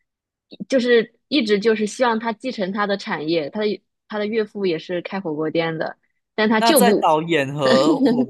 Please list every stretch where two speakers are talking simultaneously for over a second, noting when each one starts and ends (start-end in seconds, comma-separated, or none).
none